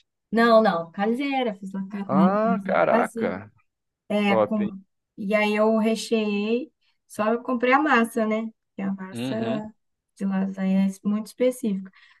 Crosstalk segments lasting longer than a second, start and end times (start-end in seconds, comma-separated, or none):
2.0-3.4